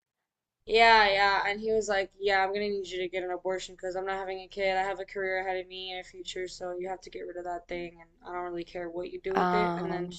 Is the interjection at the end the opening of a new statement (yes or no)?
no